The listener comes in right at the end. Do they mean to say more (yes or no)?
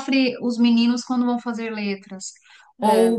no